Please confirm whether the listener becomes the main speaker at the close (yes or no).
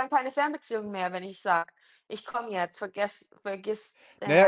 yes